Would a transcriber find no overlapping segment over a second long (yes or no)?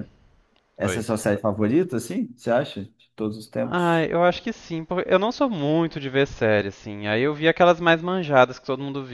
yes